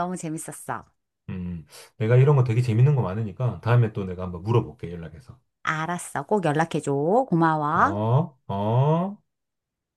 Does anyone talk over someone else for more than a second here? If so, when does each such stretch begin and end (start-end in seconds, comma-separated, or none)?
none